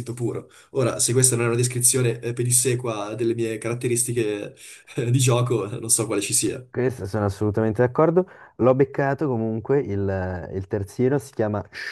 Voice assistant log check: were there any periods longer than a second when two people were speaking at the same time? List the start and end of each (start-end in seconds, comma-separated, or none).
none